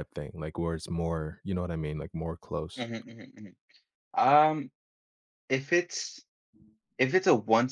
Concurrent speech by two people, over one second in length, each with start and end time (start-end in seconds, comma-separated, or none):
none